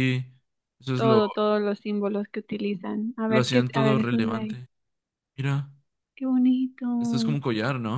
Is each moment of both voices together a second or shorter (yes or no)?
no